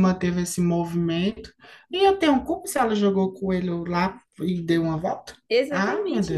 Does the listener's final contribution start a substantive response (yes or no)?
yes